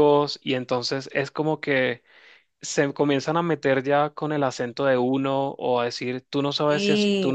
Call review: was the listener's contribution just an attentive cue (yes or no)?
yes